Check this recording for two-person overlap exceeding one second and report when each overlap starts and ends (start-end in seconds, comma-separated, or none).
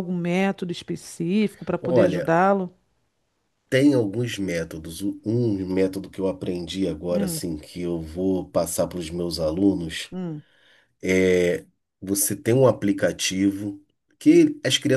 none